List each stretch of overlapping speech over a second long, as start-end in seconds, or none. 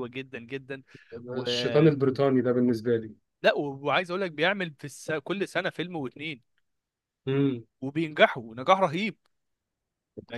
none